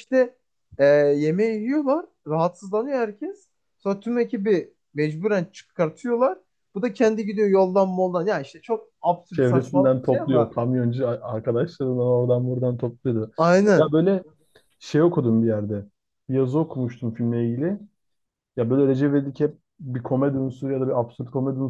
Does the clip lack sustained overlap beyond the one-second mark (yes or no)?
no